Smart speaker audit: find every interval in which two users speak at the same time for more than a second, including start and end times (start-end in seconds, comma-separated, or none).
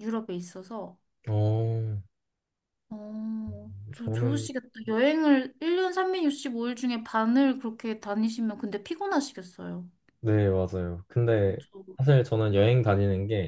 none